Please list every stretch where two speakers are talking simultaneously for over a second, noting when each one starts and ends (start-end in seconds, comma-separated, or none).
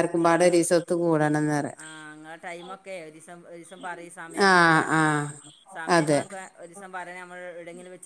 none